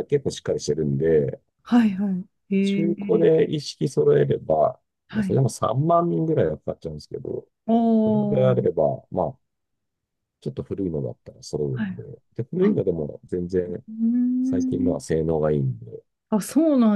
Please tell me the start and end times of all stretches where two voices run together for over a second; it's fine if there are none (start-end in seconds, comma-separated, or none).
none